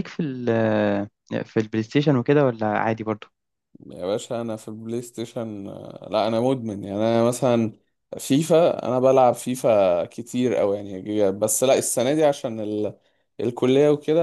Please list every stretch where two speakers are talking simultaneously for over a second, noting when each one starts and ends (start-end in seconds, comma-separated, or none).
none